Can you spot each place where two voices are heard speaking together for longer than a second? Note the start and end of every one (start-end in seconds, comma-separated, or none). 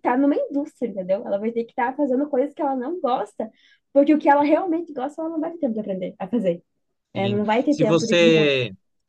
7.2-8.6